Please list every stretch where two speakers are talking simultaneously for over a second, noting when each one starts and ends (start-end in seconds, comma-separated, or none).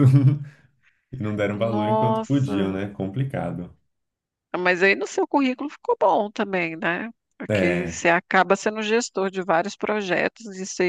1.5-2.8